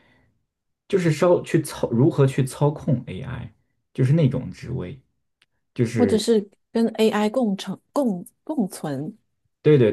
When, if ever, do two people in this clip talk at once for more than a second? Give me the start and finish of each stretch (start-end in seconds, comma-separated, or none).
none